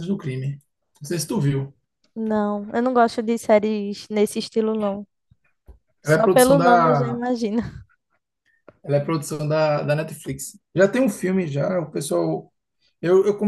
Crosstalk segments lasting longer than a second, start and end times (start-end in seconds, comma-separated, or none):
6.0-7.2